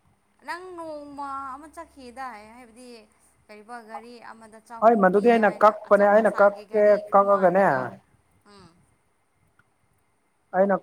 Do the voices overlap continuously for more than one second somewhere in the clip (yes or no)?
yes